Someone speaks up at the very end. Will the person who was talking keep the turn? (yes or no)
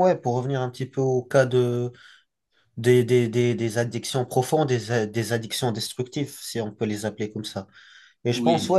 yes